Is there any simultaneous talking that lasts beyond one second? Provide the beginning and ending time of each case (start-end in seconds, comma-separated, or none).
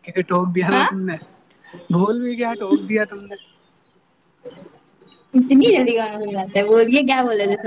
none